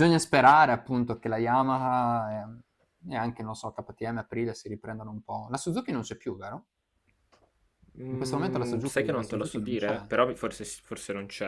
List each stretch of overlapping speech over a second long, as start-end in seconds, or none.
8.1-10.1